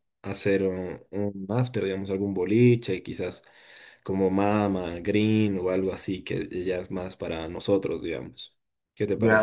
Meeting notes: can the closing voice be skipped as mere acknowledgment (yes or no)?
no